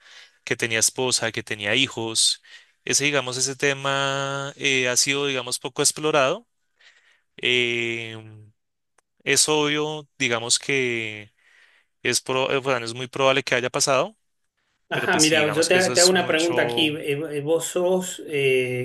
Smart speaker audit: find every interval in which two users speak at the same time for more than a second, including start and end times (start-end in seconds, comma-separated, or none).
14.9-16.9